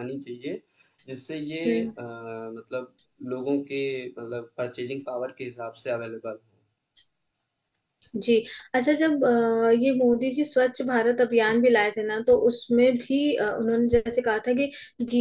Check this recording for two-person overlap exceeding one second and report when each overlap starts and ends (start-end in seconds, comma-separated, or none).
none